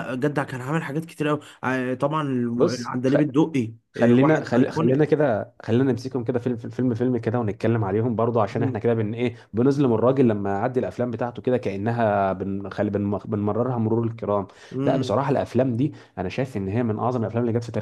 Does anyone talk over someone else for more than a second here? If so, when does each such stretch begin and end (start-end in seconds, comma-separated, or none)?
3.9-5.2